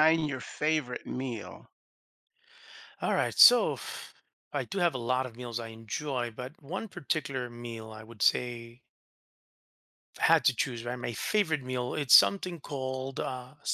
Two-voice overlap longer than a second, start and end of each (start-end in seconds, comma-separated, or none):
none